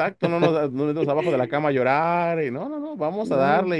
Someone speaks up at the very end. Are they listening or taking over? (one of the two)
listening